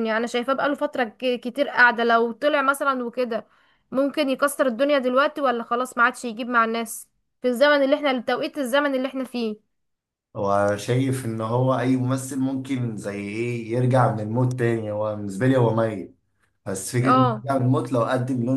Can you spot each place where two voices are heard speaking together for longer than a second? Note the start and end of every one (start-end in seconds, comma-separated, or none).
none